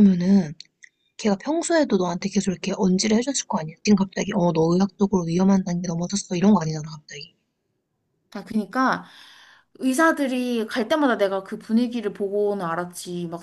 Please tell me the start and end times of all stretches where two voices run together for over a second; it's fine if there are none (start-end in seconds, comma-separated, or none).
none